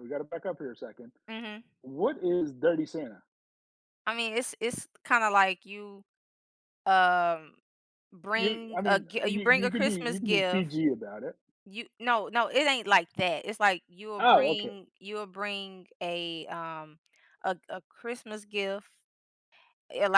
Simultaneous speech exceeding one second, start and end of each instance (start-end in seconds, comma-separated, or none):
8.3-10.7